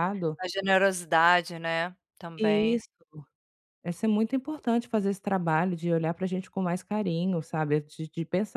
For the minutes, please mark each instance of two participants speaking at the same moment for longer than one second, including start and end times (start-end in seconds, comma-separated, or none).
none